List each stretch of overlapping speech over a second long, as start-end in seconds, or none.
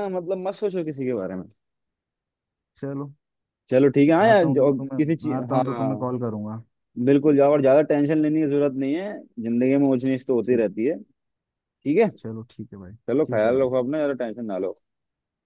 4.3-5.6